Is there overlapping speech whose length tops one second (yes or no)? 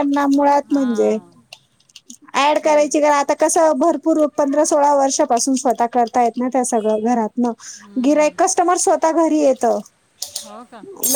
no